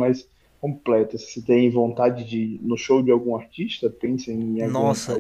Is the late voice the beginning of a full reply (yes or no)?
yes